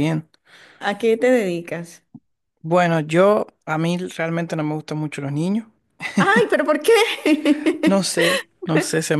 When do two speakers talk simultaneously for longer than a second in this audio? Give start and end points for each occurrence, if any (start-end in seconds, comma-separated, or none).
none